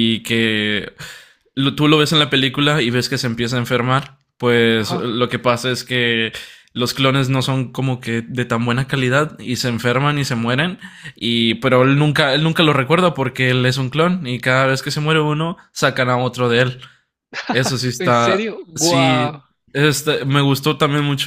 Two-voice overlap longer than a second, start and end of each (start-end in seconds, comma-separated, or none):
18.0-19.4